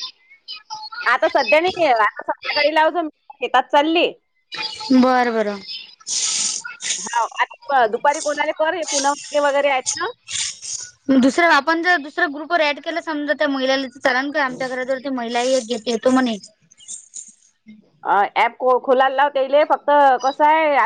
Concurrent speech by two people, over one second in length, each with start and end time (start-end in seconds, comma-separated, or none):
none